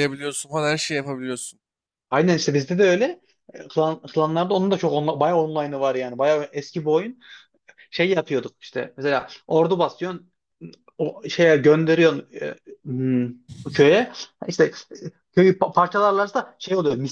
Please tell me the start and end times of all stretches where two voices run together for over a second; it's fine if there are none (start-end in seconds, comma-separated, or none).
none